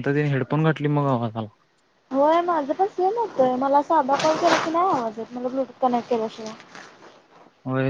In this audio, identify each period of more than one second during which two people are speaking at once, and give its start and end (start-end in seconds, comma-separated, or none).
none